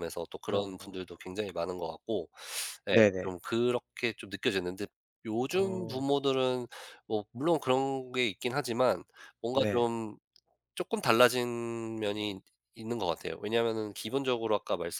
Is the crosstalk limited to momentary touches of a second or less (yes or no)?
yes